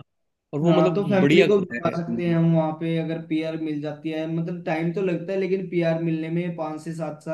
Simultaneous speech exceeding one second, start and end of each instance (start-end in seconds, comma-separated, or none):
0.7-2.4